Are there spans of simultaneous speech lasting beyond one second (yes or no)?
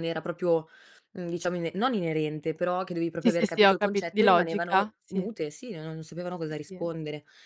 yes